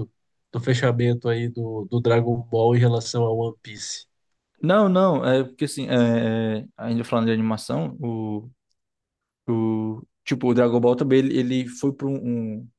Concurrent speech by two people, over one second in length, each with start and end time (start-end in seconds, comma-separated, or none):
none